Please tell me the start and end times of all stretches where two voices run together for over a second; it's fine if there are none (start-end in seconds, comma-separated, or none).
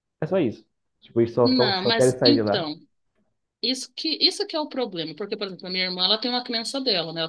1.4-2.7